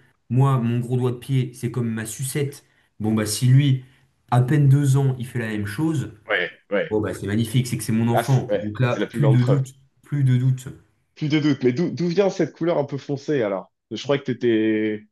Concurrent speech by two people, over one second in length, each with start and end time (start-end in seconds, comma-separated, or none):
8.1-9.6